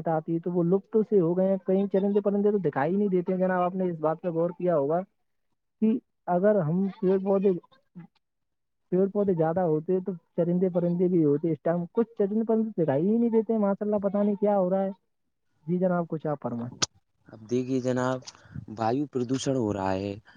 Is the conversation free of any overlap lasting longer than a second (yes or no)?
yes